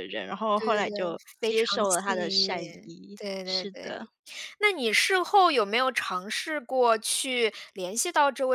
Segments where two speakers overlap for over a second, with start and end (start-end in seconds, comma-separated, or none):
0.6-4.0